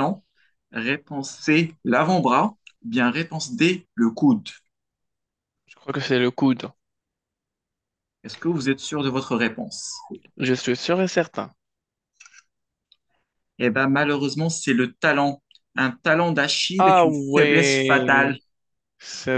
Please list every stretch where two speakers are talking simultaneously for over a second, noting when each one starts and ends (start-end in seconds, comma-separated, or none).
16.8-18.4